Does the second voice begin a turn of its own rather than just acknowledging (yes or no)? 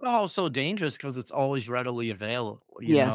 yes